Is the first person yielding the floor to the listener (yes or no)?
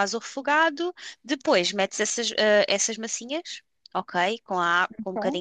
no